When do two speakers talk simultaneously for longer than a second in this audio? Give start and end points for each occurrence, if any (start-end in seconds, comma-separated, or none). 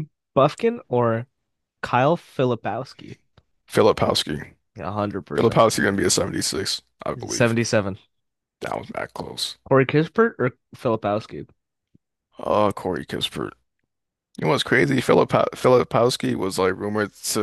none